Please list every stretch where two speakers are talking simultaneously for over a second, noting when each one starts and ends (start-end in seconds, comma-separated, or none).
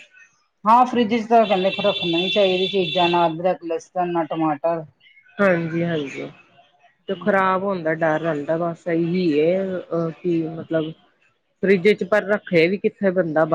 none